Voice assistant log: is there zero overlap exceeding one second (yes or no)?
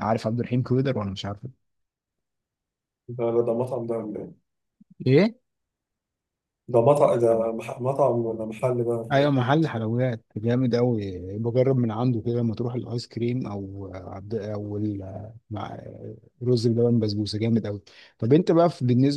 yes